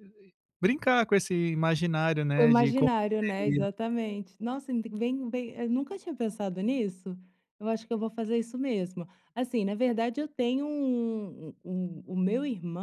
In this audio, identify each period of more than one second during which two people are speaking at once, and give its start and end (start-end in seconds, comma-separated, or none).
2.4-3.6